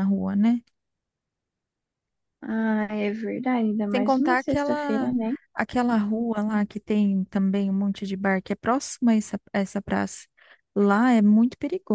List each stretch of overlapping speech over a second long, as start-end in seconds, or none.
3.9-5.1